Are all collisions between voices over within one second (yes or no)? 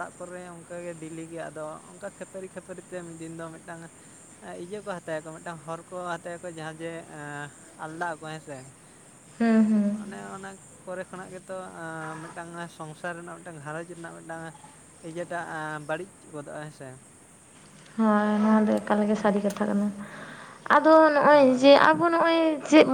yes